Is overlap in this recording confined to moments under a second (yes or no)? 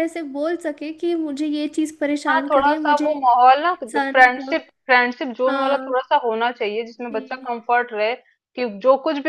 no